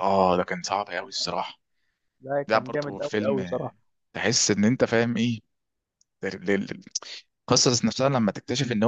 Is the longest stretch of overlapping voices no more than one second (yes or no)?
no